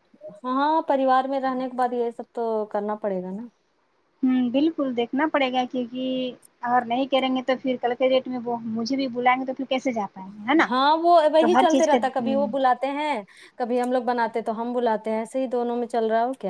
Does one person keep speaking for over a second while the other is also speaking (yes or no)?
no